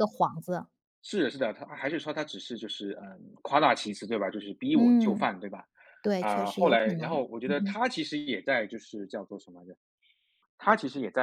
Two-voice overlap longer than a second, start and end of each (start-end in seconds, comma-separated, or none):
6.2-7.8